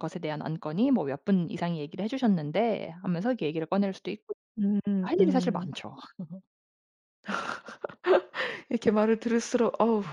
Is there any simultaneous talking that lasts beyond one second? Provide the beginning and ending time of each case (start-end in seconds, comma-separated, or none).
none